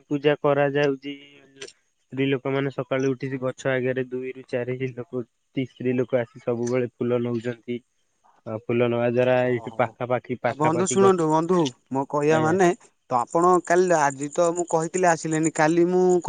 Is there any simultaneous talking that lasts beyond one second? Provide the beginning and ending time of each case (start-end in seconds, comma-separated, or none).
9.5-11.0